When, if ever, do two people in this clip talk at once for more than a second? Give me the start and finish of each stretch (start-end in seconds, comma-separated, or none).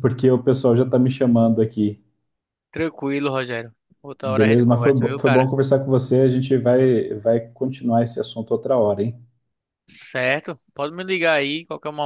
4.2-5.5